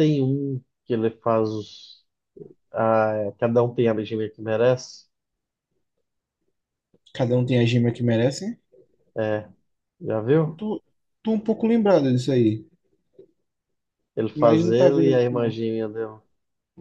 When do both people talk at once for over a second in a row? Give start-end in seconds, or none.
14.3-15.6